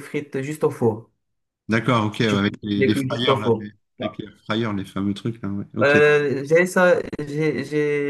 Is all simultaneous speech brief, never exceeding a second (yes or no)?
no